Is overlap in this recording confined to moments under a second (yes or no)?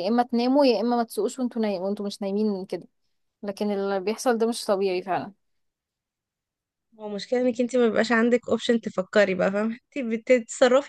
yes